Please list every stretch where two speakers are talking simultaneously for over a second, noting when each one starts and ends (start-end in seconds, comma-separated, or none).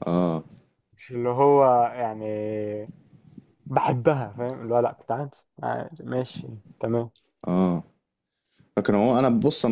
none